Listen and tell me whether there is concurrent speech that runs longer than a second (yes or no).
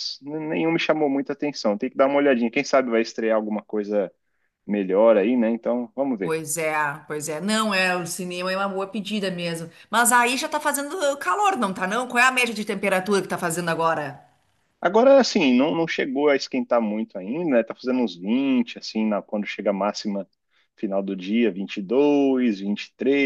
no